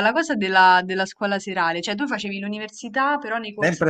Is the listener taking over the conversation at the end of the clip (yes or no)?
yes